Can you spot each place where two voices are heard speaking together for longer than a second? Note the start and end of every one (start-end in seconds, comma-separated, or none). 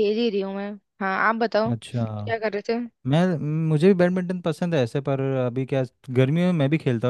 none